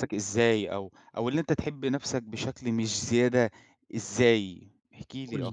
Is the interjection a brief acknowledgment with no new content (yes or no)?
no